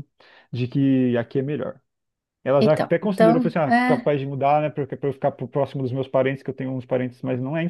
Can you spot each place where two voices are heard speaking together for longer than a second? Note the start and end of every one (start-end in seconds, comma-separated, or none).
2.6-4.1